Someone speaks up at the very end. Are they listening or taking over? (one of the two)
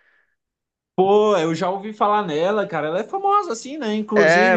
listening